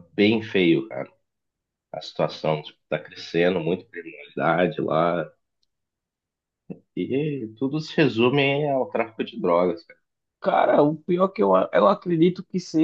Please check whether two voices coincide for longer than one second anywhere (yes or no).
no